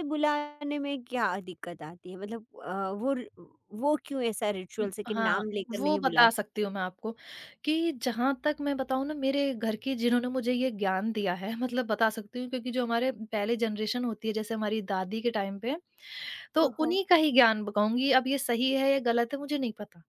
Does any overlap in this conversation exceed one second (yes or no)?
yes